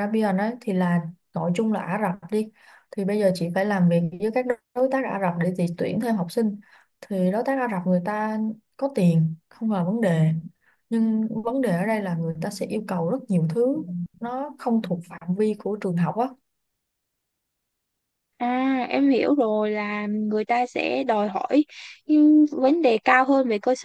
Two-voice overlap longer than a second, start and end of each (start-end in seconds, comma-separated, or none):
none